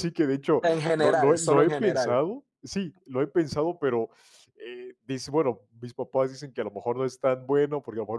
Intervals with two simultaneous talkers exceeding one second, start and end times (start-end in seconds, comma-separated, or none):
0.6-2.2